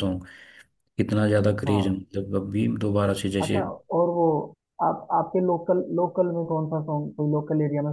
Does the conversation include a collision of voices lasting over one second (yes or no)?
no